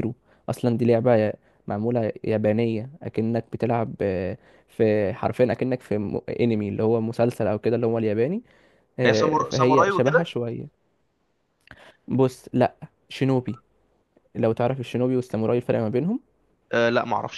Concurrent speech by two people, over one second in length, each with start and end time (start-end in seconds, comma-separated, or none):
9.1-10.3